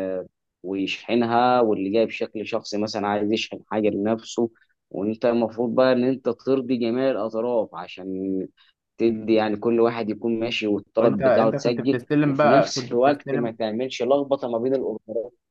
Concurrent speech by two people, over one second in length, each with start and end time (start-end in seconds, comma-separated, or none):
11.0-13.5